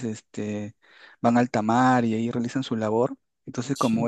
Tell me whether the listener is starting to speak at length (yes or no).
no